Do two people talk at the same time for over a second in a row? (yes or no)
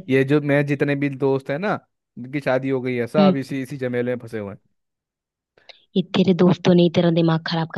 no